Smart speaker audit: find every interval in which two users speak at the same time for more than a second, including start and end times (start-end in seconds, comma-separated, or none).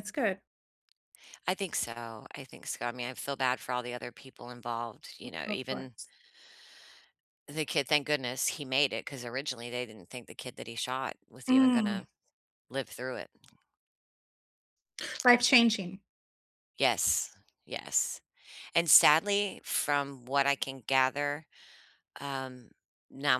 none